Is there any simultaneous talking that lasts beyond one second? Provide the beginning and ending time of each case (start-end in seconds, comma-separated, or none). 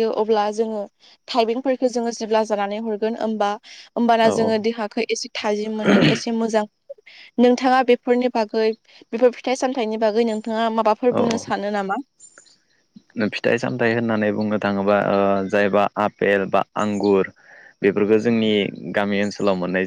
none